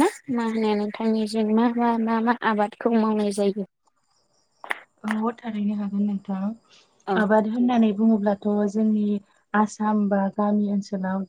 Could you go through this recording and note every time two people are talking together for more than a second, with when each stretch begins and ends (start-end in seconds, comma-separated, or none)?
none